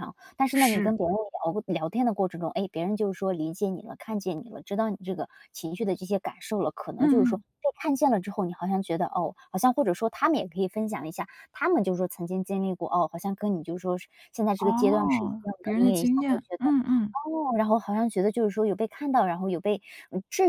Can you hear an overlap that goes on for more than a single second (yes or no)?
yes